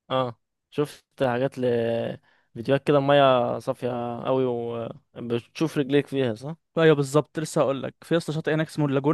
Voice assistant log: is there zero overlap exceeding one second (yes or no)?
yes